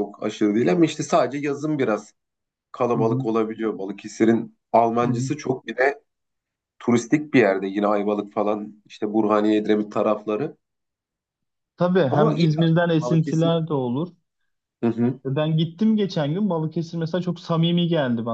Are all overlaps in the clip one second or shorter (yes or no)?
no